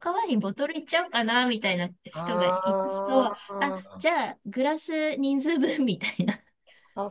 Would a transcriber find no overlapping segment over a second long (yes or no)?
no